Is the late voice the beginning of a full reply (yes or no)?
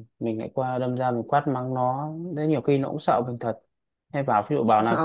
no